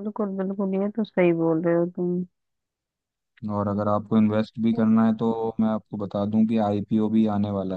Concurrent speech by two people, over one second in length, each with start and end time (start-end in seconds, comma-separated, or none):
none